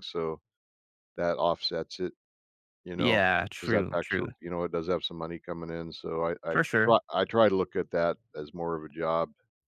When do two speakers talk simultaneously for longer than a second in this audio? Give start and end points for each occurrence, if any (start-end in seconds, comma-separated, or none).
3.0-4.3